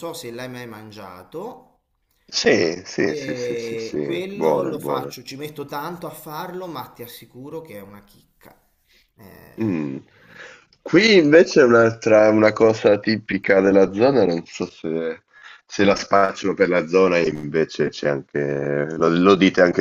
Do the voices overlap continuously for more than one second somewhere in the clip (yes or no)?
yes